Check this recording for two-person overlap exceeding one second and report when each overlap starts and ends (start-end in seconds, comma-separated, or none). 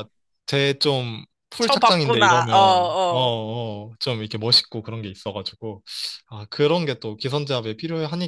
1.6-3.2